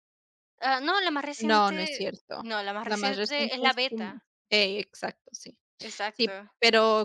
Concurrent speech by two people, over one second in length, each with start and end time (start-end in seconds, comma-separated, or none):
1.4-4.2